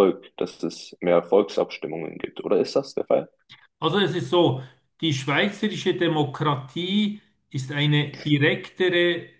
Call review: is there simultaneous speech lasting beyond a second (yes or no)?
no